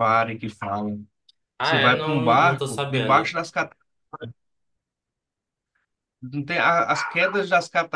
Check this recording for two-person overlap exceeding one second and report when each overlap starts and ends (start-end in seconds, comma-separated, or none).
1.6-3.4